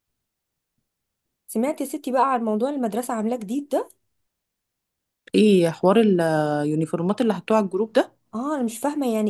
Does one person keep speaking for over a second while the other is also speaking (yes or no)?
no